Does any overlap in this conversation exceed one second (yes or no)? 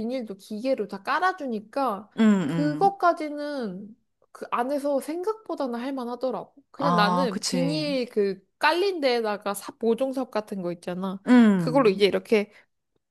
yes